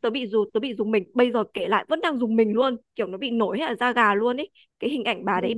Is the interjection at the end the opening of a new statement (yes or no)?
no